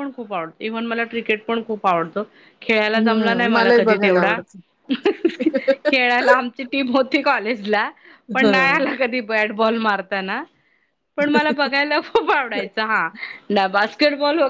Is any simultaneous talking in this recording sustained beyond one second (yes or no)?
yes